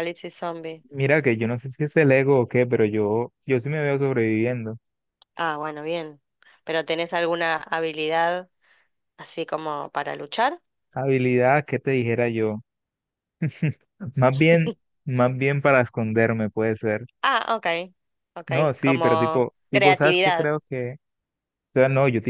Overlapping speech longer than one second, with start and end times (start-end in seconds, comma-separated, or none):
18.5-20.5